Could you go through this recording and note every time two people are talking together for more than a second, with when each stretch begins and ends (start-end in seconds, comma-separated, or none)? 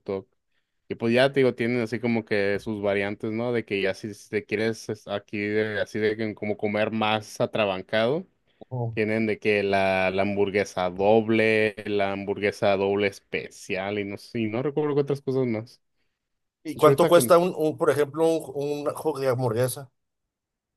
none